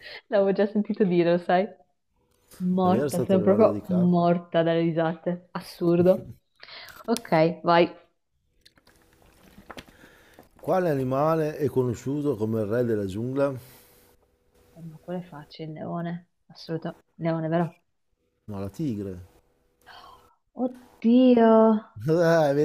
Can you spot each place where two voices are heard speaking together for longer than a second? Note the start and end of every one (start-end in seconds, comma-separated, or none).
2.8-4.2